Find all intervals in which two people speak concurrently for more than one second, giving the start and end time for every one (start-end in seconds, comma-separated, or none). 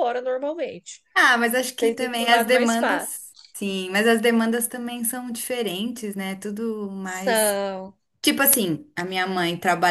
1.8-3.2